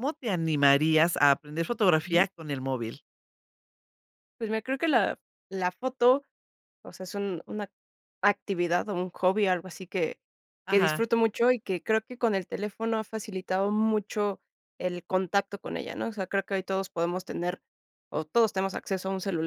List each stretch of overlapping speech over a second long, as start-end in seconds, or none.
none